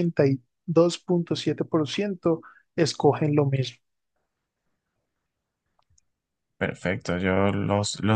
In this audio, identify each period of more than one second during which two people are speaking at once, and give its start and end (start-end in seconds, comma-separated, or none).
none